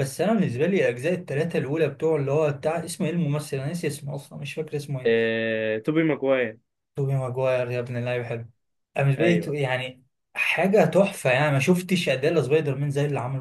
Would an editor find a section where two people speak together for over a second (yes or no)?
no